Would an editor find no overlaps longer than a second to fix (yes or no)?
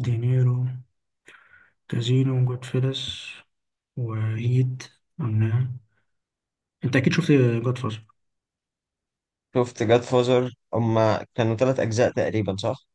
yes